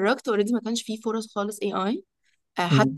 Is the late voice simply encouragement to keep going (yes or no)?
yes